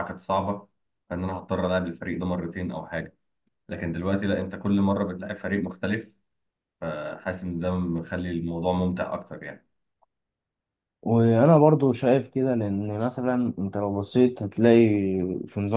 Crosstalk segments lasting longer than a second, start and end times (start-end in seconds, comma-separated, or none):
none